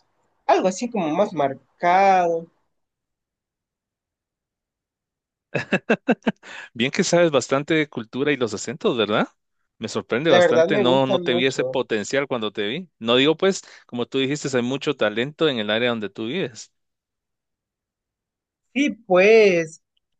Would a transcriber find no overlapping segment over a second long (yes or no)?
no